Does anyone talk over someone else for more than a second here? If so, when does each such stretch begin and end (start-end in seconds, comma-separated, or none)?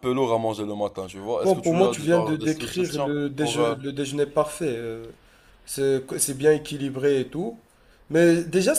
1.4-3.8